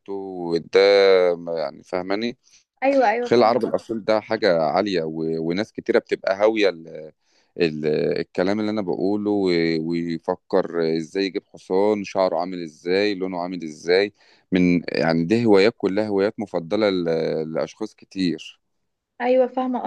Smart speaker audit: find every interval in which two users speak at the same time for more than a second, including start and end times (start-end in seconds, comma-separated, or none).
none